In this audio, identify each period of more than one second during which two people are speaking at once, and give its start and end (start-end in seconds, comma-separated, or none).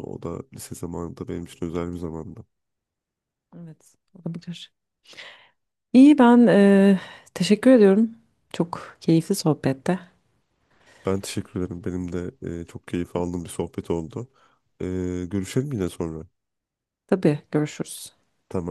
none